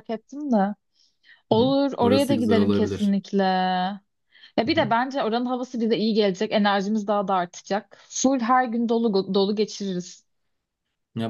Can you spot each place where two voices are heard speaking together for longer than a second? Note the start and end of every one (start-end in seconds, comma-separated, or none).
1.6-3.1